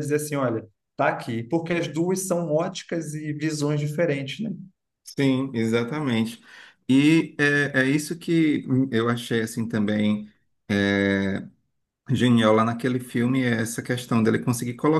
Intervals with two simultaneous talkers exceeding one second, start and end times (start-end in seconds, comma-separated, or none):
none